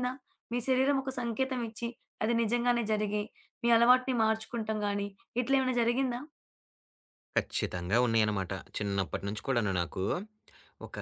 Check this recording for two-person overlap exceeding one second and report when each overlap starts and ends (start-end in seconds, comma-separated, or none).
none